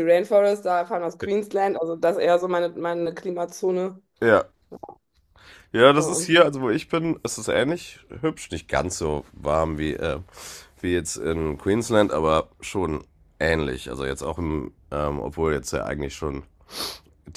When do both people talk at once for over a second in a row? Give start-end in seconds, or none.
none